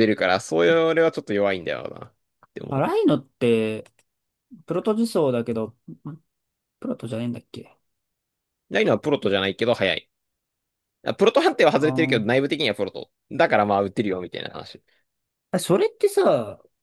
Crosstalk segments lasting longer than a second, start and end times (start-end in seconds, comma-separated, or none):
none